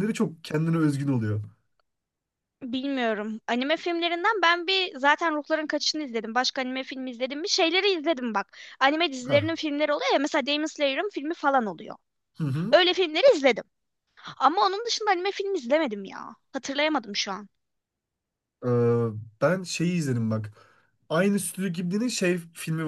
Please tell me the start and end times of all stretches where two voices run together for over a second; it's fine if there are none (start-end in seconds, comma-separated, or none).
none